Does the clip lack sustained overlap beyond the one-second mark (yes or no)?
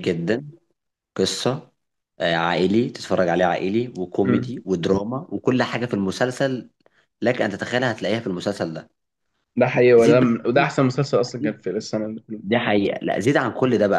yes